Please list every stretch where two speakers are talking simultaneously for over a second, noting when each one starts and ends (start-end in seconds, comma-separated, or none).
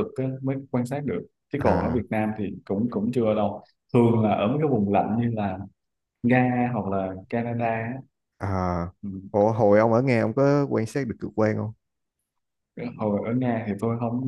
none